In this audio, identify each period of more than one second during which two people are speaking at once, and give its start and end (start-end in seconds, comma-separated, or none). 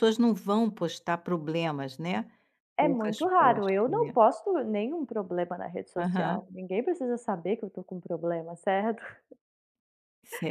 2.8-4.1